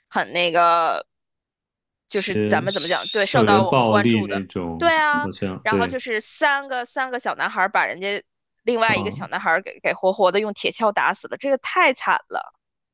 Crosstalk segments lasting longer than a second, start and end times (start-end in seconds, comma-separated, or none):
2.1-6.0